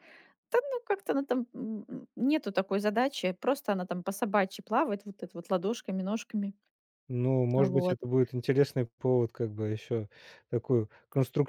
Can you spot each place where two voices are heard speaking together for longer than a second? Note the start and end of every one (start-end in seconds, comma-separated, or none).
none